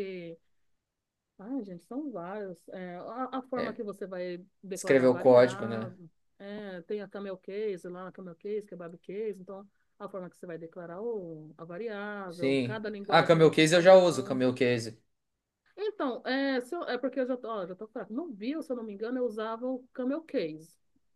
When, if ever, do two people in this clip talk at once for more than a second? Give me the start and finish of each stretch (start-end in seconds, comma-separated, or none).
4.7-6.0, 12.3-14.4